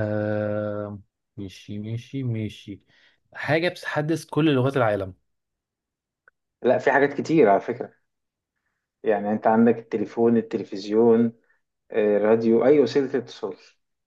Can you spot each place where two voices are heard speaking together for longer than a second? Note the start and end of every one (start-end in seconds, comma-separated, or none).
none